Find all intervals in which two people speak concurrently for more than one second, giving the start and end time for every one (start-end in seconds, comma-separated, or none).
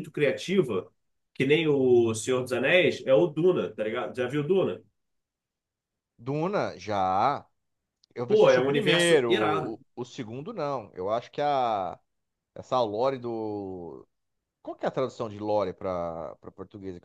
8.3-9.8